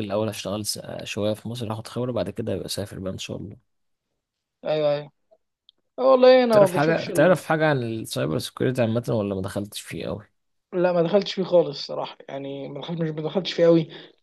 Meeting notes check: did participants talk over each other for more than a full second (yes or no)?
no